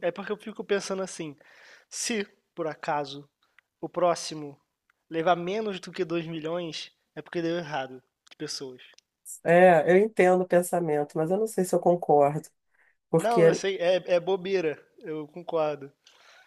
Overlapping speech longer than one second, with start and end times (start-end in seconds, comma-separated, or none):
none